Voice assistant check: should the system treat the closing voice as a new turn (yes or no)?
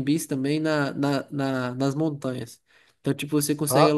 no